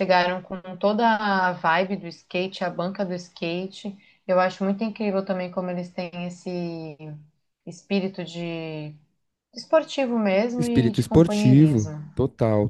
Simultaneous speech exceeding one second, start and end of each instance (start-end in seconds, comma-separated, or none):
10.6-12.0